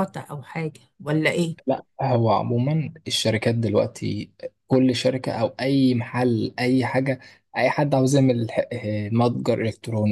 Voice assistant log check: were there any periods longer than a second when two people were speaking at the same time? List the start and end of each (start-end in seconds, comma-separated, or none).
none